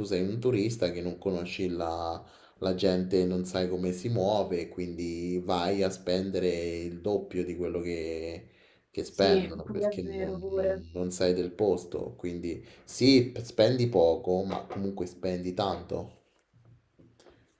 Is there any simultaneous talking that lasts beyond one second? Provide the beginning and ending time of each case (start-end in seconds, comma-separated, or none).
9.1-10.8